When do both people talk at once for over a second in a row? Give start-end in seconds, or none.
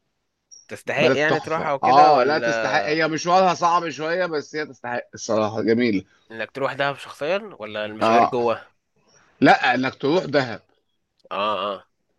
1.0-2.5